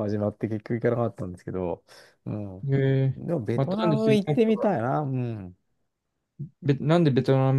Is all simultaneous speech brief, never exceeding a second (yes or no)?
no